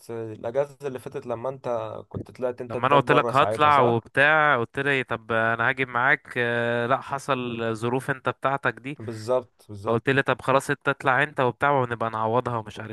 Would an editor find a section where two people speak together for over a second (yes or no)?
yes